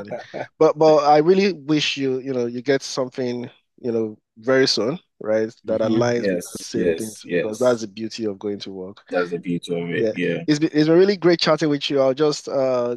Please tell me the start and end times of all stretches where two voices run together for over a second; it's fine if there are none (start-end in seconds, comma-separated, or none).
5.6-7.8